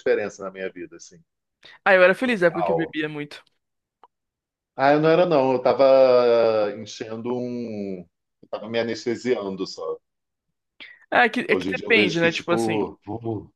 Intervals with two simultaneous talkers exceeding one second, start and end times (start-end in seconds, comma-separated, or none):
11.5-12.8